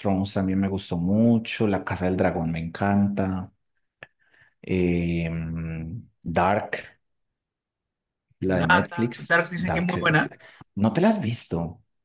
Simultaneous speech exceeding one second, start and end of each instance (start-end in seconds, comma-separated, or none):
8.7-10.2